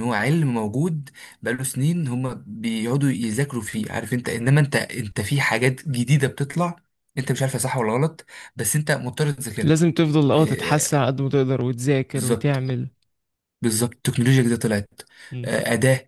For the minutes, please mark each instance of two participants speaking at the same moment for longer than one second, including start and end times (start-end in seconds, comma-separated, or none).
none